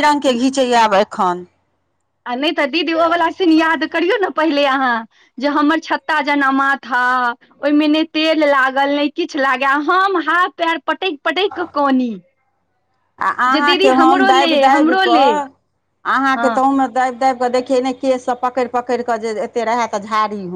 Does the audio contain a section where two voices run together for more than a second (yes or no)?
yes